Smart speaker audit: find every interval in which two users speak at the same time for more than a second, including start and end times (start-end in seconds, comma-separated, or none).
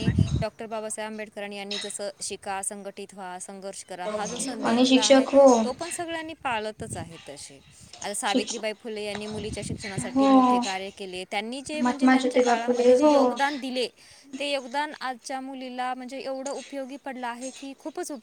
11.8-13.1